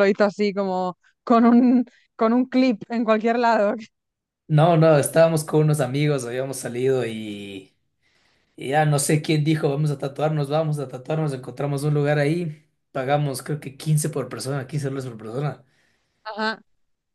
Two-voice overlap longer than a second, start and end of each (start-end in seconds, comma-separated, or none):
none